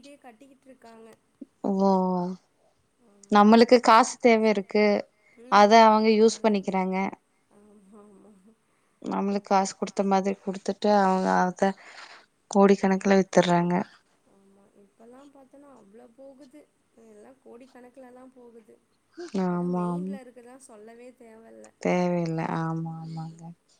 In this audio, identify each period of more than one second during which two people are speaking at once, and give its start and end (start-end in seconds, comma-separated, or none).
none